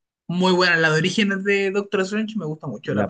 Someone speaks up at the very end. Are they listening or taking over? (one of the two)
taking over